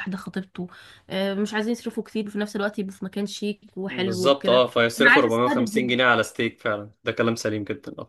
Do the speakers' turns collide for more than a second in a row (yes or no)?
yes